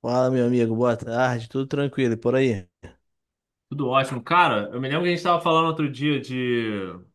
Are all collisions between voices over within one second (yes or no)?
yes